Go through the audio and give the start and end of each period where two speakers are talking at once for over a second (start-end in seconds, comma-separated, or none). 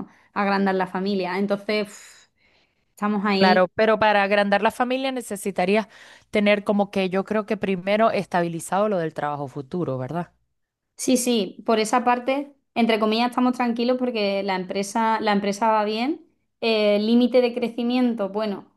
none